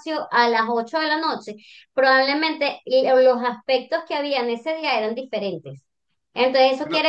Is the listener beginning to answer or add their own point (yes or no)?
no